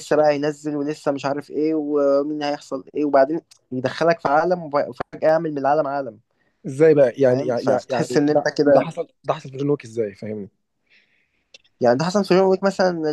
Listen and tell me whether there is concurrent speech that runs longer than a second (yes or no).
yes